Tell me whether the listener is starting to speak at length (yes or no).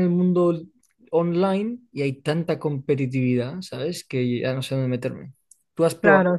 yes